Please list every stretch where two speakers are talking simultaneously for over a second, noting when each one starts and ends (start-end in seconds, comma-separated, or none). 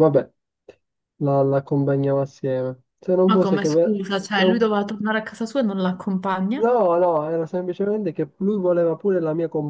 3.3-4.7